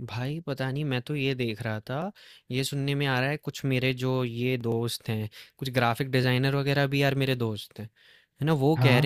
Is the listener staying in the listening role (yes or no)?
yes